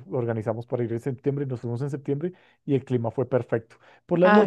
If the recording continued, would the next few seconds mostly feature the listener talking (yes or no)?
no